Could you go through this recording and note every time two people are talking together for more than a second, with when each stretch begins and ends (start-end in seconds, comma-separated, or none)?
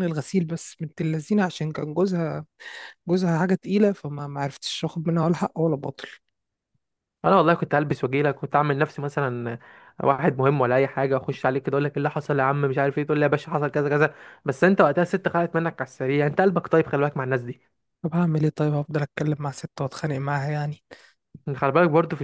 none